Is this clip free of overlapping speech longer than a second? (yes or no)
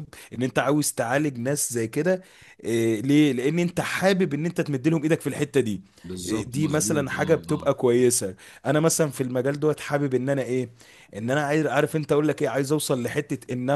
no